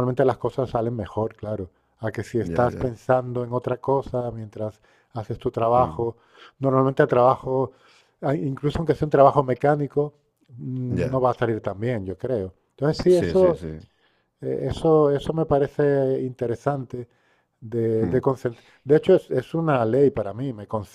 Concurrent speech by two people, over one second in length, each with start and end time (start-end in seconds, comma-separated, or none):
none